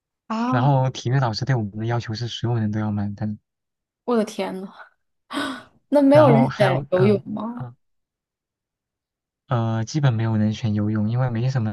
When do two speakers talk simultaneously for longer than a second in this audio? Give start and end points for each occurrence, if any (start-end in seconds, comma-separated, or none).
6.1-7.7